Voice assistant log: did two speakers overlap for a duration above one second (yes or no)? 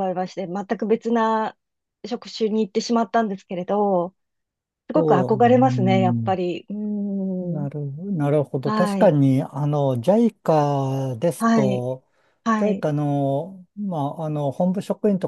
yes